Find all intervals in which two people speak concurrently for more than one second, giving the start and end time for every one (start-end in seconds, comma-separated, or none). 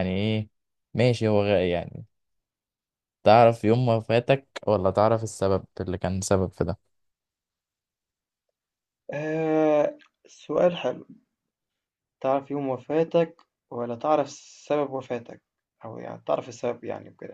none